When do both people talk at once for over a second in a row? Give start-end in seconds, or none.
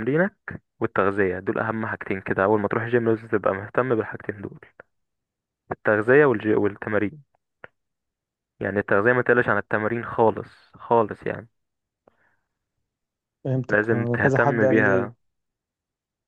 13.7-15.1